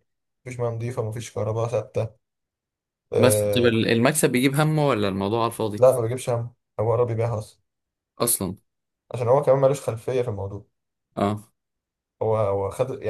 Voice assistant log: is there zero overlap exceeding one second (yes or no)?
yes